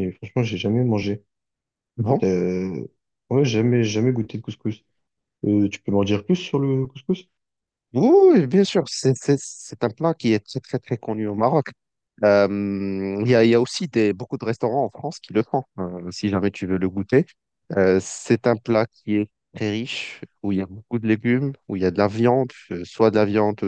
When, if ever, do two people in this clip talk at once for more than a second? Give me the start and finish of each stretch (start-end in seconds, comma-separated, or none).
none